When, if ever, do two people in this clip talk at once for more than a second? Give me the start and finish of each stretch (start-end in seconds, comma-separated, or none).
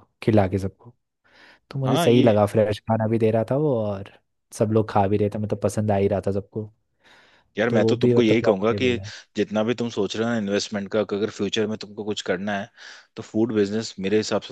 7.7-9.0